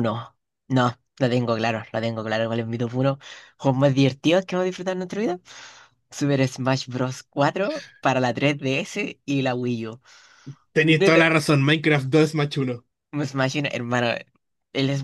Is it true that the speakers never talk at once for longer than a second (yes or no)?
yes